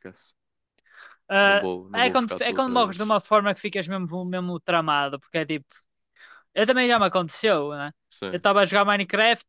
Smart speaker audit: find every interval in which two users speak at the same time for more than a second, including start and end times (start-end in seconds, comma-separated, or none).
1.9-3.1